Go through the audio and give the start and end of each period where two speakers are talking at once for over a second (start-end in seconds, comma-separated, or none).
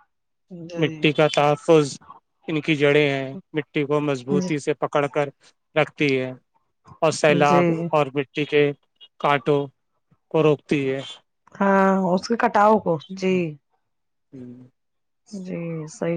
none